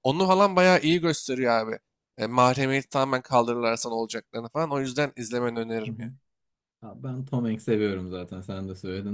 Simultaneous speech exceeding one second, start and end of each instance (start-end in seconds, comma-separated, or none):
none